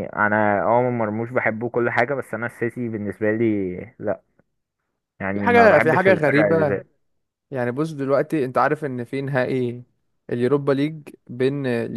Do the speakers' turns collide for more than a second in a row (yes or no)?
yes